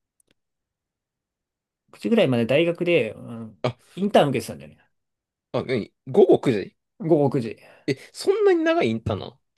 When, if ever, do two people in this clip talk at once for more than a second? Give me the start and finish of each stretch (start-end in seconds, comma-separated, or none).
none